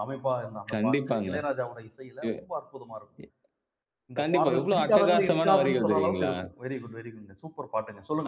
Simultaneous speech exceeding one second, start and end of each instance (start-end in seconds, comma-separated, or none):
4.2-6.3